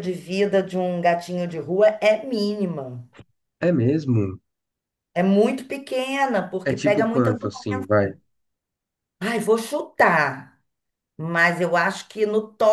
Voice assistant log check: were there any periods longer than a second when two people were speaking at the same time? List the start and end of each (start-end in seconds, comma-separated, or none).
6.6-7.9